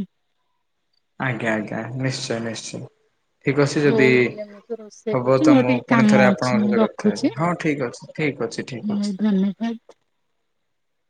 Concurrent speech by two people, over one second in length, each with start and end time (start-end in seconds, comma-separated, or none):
5.2-7.3